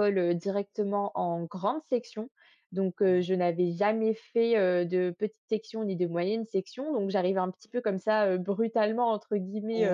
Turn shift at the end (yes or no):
no